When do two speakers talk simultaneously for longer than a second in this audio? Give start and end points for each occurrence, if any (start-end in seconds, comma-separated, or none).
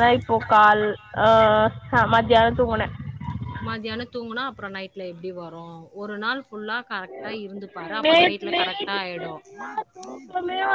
8.0-9.3